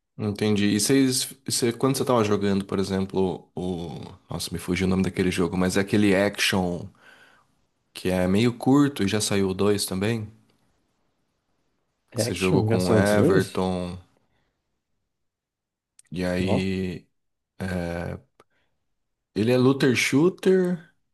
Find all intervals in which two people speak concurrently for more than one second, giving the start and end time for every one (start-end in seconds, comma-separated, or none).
12.1-13.6